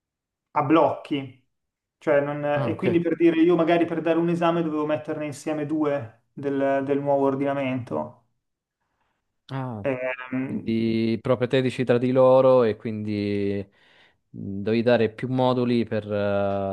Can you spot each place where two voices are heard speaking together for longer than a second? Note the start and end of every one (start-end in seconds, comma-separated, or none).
none